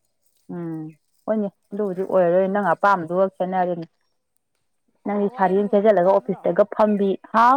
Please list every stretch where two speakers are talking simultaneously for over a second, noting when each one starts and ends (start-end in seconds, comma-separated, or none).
1.7-3.2